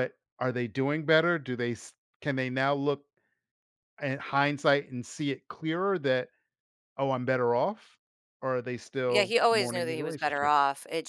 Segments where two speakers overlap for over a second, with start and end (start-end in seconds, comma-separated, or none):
9.1-10.5